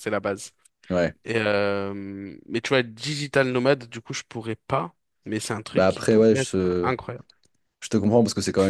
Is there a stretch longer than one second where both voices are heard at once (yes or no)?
yes